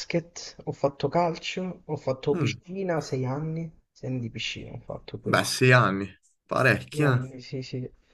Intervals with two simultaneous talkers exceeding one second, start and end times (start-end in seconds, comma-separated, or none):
none